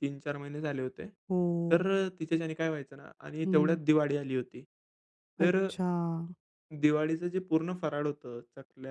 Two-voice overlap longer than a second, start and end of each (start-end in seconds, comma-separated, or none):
none